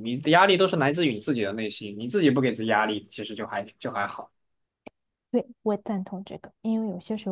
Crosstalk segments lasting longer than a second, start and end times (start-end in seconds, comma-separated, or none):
none